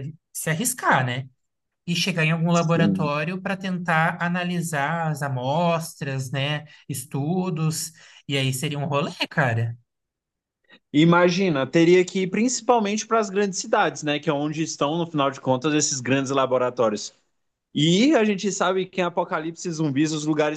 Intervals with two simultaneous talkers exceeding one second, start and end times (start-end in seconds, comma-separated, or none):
none